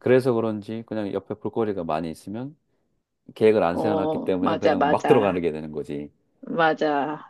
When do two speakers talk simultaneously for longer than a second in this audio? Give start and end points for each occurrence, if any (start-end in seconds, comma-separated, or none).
3.7-5.4